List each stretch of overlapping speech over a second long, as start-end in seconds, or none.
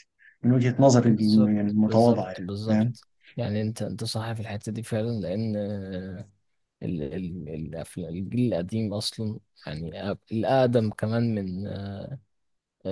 1.1-2.9